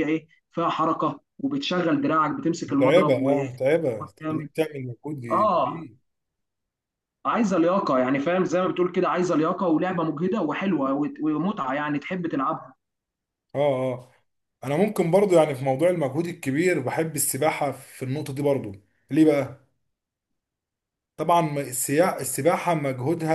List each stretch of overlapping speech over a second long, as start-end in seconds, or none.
2.7-4.5